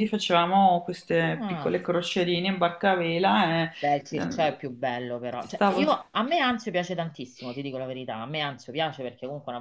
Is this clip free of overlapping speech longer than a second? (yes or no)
yes